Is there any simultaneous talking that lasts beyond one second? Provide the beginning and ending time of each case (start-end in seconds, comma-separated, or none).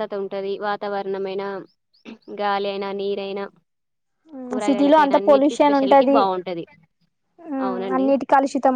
4.7-6.2